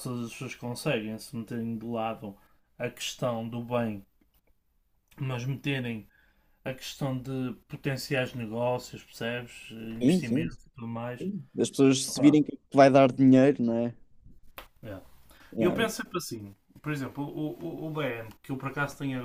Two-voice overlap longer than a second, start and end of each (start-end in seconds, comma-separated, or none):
10.0-11.2